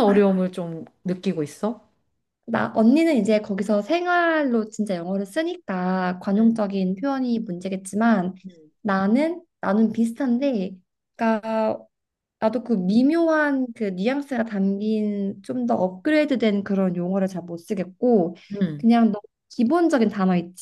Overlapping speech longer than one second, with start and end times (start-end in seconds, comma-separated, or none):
none